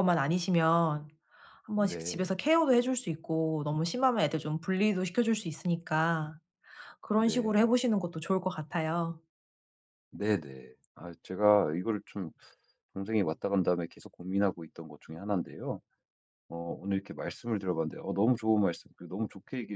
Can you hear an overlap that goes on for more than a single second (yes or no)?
no